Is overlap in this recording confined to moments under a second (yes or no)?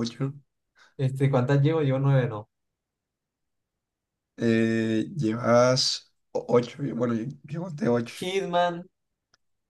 yes